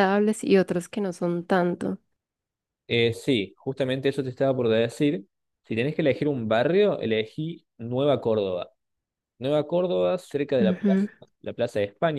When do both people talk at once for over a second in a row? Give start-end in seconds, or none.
none